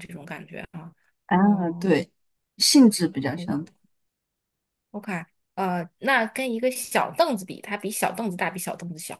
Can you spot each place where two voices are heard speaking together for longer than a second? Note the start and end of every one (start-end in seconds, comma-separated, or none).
none